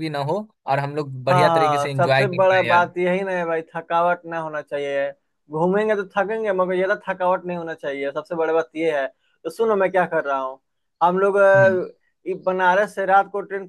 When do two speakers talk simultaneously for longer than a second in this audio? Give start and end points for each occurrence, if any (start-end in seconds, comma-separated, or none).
1.3-2.9